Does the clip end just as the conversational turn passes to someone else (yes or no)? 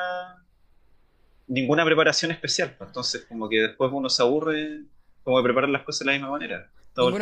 yes